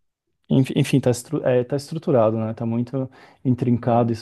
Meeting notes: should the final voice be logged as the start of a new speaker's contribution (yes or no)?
no